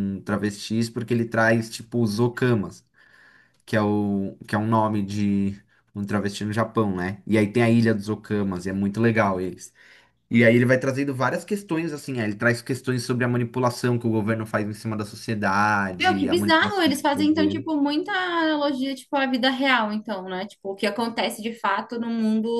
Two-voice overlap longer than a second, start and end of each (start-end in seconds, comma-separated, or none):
16.0-17.6